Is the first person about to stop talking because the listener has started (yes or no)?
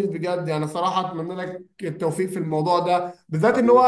no